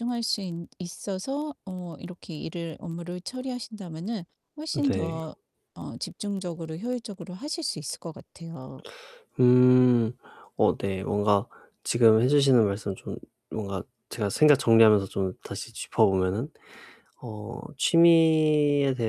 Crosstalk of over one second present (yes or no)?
no